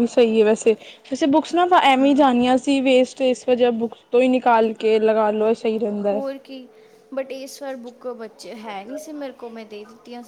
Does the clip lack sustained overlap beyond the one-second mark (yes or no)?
yes